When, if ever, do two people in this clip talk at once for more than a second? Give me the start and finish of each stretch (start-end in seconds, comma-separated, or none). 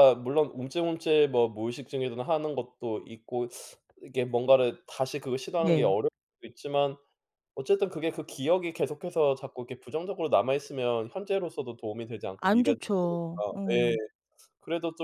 12.4-13.8